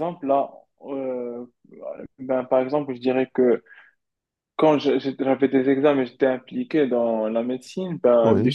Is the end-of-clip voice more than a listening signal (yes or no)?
no